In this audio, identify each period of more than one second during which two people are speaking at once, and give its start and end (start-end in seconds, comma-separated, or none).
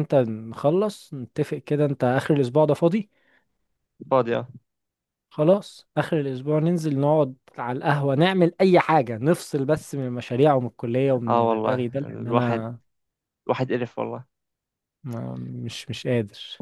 11.3-12.7